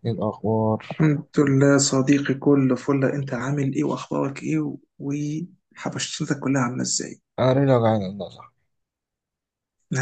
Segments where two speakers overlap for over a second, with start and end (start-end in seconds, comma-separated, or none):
none